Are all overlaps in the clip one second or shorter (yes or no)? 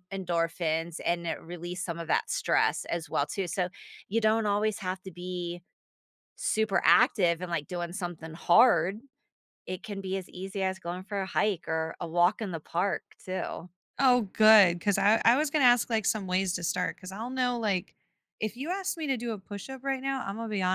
yes